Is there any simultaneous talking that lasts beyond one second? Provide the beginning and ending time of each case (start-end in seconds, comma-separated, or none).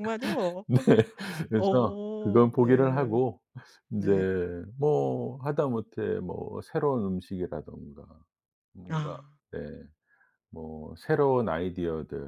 1.6-3.2